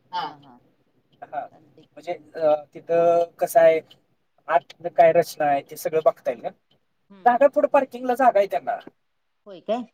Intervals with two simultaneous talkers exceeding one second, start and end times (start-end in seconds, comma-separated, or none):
none